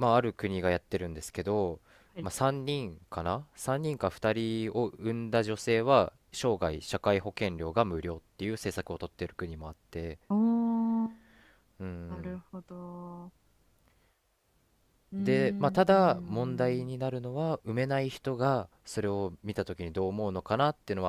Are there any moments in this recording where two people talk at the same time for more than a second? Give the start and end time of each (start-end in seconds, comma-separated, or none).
15.2-16.9